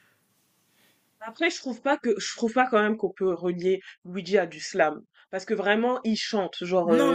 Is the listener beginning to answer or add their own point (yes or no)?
yes